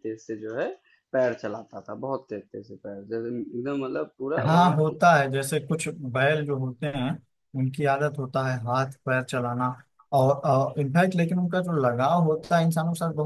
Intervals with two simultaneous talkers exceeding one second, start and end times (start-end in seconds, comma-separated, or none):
none